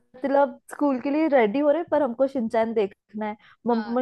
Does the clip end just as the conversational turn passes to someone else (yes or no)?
no